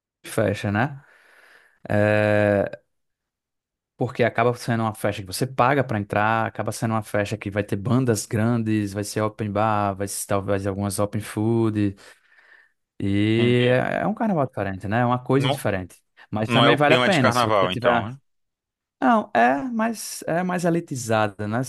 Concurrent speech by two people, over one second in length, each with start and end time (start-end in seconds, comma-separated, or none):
16.5-18.1